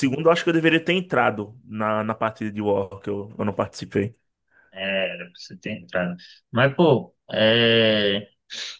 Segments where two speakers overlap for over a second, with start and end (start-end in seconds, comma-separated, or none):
none